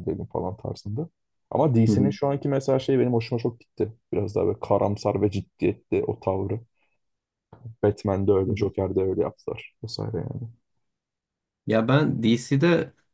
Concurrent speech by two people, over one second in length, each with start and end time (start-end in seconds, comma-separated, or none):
none